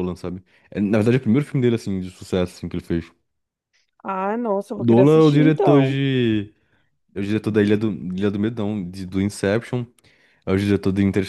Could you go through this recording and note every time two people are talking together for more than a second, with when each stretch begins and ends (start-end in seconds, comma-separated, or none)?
4.8-6.0